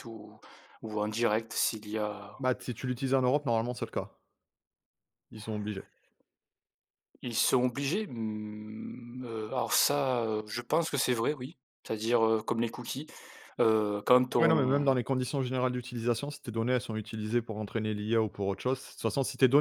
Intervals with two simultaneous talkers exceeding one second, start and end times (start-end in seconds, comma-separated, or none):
none